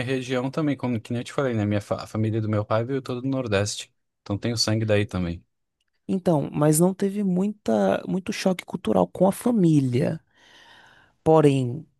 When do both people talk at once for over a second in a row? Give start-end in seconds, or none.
none